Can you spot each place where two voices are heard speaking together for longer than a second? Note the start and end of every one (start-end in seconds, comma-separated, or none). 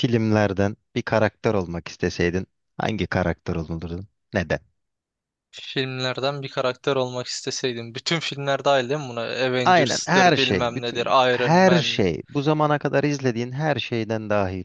9.6-12.0